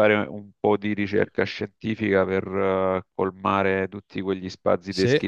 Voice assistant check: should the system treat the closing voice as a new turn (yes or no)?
no